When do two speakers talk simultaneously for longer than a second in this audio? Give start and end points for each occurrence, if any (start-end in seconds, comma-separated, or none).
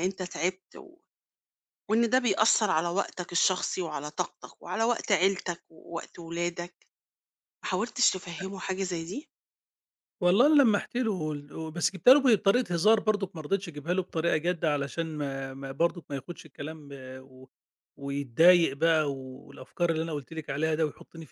none